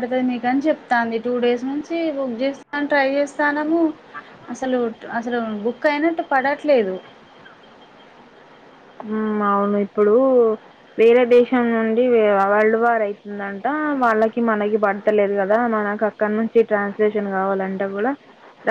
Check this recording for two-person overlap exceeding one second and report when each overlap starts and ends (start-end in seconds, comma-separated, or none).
none